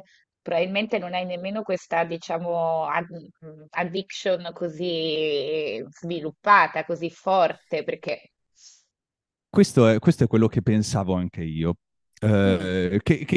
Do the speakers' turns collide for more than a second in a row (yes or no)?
no